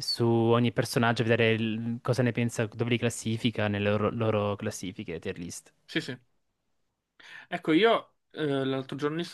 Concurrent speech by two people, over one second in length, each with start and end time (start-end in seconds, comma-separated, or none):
none